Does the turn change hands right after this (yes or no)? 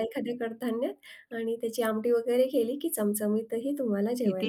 yes